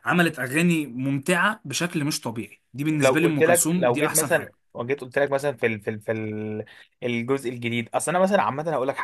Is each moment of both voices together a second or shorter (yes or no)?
no